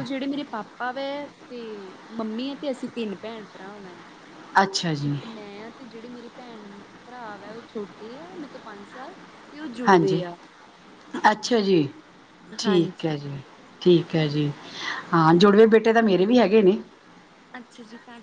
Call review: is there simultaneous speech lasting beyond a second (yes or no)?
no